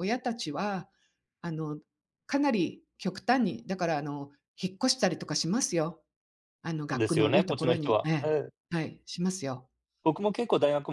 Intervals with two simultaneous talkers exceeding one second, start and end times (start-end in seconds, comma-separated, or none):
6.9-8.3